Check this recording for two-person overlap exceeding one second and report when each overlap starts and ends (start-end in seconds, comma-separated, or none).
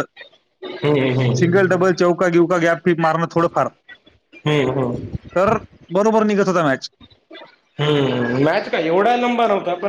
none